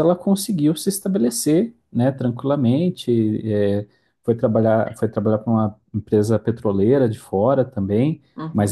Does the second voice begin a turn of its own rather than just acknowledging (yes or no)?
yes